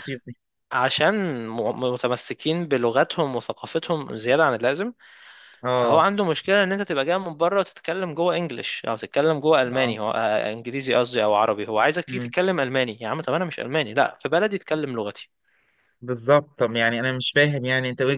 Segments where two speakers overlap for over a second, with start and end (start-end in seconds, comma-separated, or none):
none